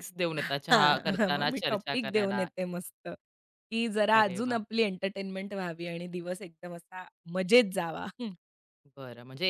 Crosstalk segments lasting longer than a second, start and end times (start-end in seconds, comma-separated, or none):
0.7-2.5